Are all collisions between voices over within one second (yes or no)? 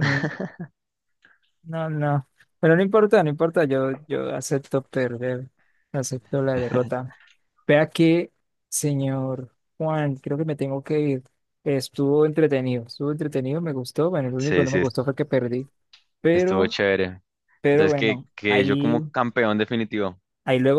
no